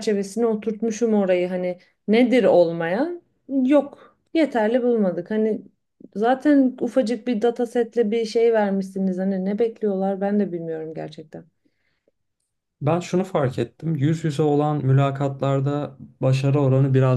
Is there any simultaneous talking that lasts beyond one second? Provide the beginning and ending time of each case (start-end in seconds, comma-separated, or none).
none